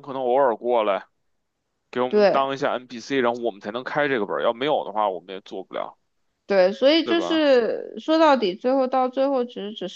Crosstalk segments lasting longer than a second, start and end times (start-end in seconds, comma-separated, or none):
none